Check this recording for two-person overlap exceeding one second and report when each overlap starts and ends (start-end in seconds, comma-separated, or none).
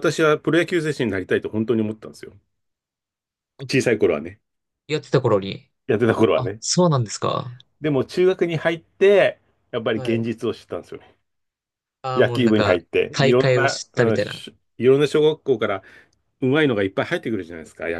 12.2-14.5